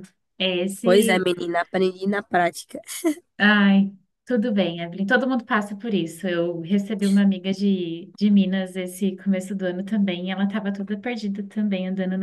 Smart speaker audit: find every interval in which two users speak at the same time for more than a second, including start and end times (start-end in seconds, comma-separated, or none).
none